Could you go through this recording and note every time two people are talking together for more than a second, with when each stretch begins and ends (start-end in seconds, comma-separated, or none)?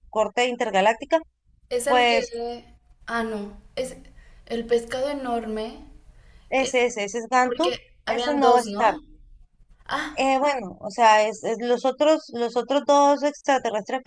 7.4-9.0